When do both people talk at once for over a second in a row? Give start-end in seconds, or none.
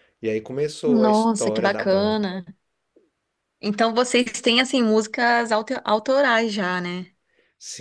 0.9-2.3